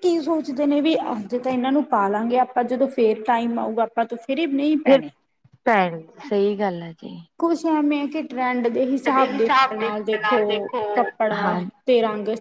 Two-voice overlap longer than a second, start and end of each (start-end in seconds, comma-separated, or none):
none